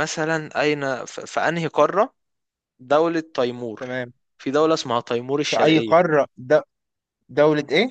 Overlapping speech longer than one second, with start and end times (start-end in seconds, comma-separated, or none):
none